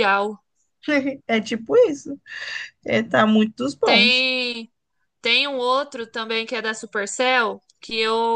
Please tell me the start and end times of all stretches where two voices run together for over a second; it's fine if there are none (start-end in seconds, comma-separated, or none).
none